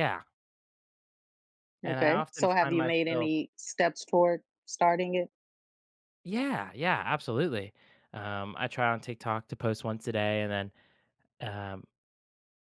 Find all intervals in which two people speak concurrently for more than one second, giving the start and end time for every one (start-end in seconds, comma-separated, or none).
1.9-3.3